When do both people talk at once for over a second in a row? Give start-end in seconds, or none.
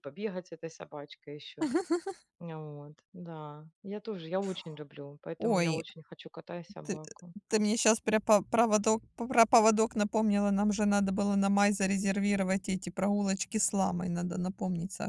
none